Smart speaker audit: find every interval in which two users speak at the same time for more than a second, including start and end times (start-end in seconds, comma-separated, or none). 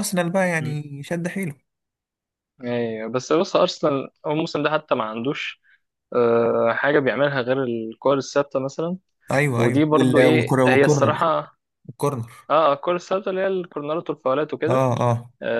9.6-11.2